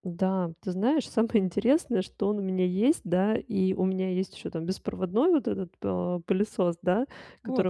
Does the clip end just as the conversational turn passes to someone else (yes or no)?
no